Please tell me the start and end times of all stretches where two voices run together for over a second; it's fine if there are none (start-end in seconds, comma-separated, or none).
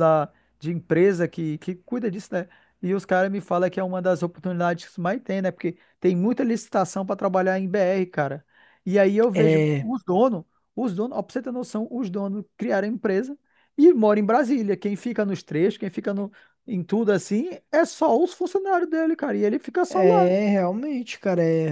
none